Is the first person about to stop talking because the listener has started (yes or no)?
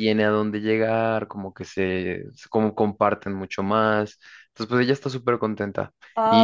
yes